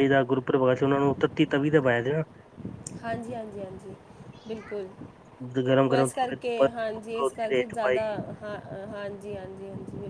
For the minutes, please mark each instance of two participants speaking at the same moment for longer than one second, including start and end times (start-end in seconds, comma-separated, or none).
6.0-8.0